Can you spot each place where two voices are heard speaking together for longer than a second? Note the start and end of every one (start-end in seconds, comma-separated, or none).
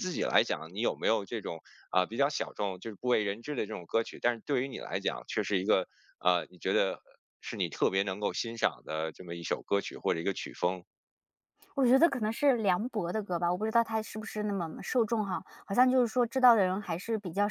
none